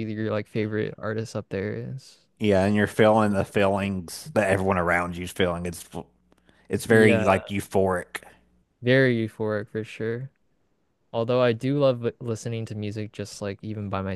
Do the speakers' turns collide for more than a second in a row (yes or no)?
no